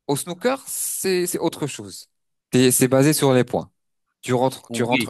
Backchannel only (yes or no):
yes